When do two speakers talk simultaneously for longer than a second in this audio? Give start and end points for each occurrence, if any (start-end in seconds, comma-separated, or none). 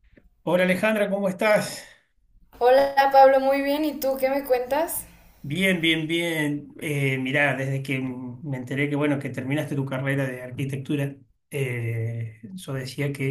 none